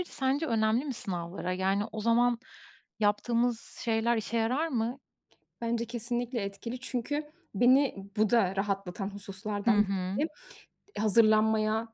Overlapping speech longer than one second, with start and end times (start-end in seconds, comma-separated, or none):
none